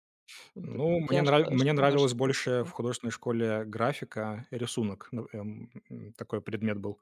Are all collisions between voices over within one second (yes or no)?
no